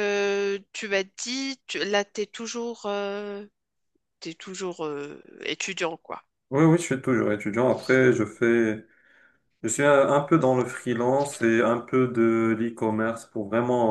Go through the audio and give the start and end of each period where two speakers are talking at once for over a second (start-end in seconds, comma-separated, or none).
none